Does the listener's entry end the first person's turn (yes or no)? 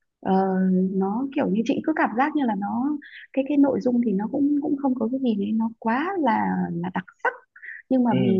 no